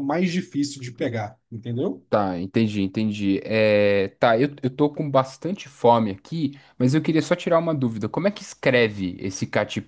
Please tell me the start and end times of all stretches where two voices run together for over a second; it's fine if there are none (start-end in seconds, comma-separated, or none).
none